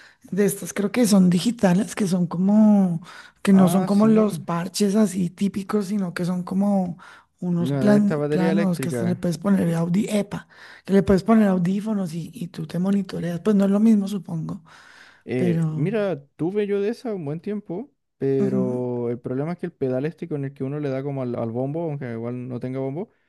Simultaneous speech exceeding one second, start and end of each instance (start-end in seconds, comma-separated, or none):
7.6-9.2